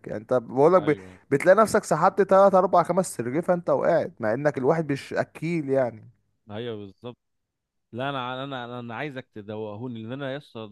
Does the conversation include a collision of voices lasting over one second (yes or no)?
no